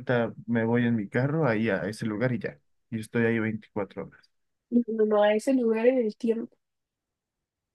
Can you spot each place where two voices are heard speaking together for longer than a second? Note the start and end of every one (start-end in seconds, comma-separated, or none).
none